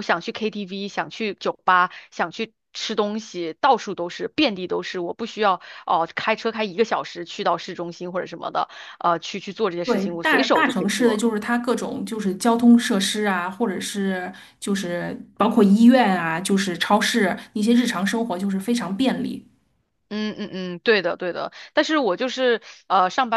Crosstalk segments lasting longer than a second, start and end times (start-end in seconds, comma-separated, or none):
9.8-11.2